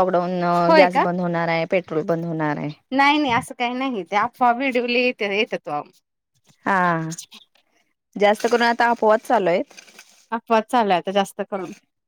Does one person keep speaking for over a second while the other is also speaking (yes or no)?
no